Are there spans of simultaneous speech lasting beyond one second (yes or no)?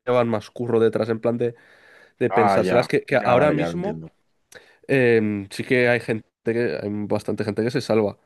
yes